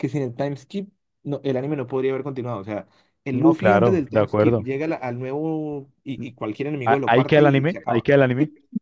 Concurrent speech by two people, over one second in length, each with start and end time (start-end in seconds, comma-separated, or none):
3.3-4.7, 6.8-8.1